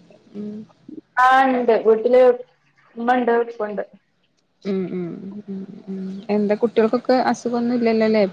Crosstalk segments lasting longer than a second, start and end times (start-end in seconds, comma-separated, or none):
none